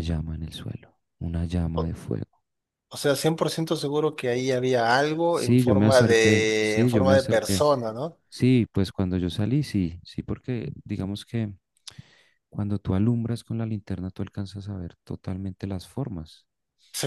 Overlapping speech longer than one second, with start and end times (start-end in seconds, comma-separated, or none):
5.3-7.6